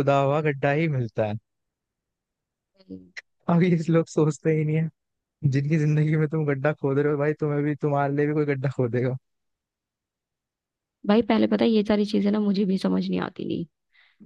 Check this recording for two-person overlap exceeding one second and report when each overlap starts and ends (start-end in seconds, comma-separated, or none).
none